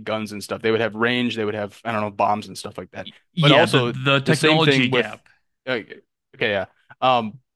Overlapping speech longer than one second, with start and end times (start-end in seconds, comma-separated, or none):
3.3-5.2